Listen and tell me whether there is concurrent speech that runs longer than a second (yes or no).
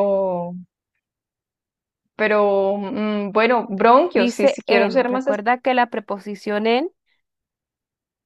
yes